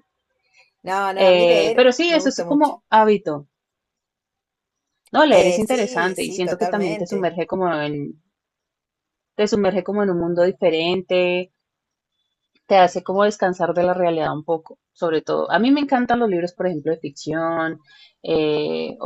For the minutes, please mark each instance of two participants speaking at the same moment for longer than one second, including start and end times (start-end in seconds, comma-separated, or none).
1.2-2.7, 5.3-7.3